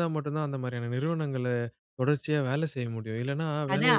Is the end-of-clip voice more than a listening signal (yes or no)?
yes